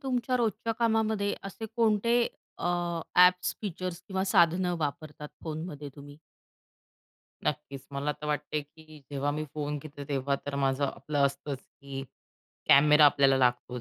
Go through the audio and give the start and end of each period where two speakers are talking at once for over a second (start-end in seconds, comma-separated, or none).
none